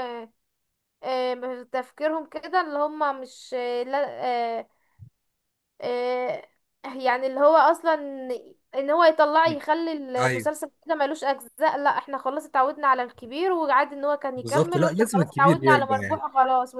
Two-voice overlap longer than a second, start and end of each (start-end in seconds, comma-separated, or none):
14.4-16.2